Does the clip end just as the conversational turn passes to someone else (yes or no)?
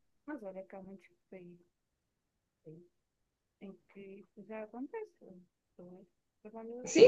yes